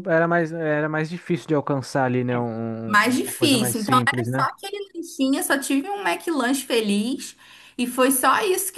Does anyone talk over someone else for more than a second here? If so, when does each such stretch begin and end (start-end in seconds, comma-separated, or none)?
2.9-4.5